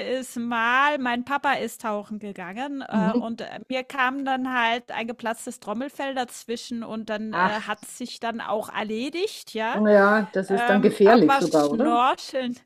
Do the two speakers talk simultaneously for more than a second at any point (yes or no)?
yes